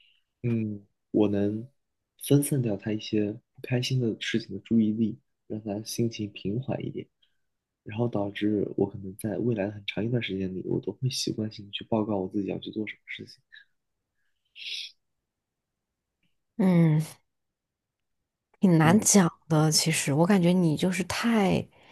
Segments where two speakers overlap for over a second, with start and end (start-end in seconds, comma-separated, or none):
none